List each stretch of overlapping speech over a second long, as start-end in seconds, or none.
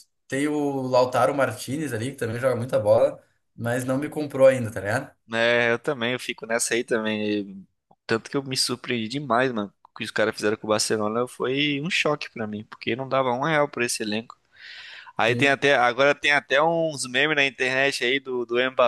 none